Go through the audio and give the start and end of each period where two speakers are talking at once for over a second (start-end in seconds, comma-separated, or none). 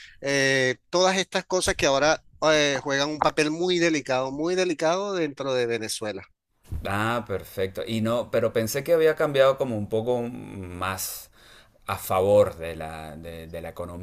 none